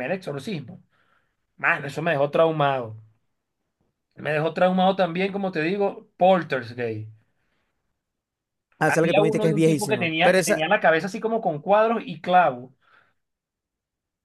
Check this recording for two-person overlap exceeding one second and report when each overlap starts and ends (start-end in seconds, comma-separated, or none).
8.8-10.7